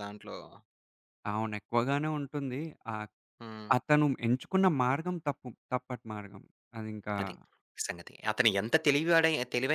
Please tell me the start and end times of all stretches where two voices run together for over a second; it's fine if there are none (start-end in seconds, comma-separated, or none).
none